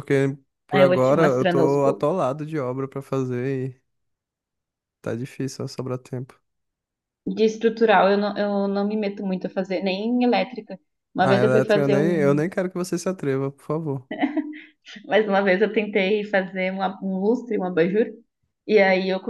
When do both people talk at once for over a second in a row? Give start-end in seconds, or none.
0.7-2.1, 11.2-12.4